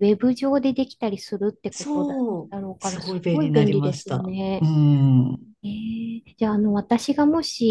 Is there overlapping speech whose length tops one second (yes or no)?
yes